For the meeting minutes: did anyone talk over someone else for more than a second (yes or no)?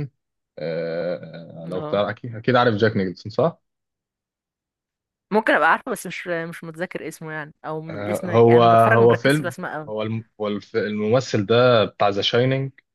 yes